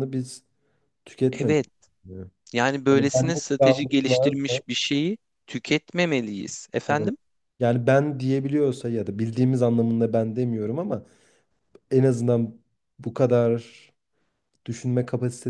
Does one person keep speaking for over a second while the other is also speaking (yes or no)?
yes